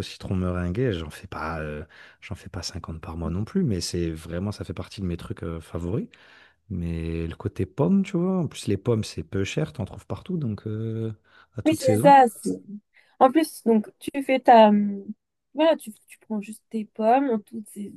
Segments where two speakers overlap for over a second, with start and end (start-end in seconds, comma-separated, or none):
none